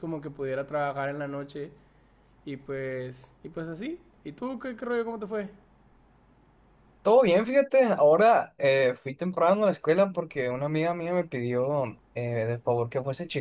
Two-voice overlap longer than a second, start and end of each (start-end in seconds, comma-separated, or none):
none